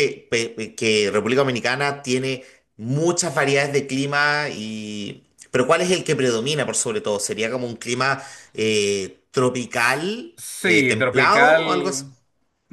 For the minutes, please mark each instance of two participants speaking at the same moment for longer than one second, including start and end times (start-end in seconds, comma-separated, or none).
10.3-12.0